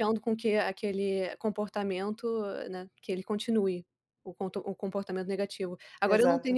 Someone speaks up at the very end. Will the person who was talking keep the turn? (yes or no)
yes